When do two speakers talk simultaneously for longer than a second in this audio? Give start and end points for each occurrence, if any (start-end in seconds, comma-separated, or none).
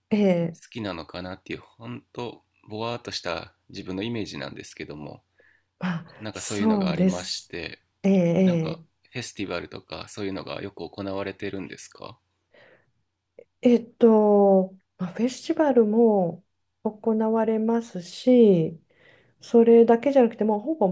6.2-7.5